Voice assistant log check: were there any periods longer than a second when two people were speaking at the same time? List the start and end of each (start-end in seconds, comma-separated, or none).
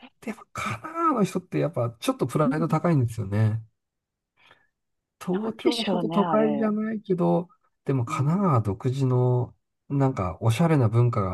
5.3-6.7